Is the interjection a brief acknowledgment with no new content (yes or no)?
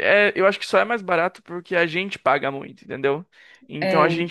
yes